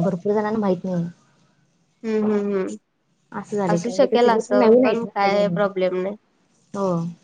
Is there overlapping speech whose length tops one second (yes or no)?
yes